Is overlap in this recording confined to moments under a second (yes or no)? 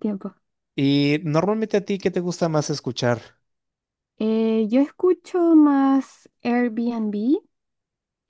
yes